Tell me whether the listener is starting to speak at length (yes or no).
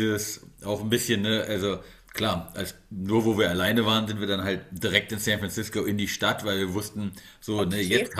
no